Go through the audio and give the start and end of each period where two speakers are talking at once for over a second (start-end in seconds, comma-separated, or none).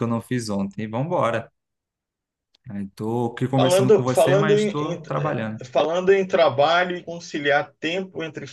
3.5-5.6